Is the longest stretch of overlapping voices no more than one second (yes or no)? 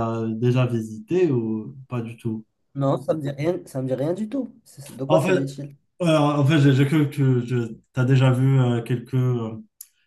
yes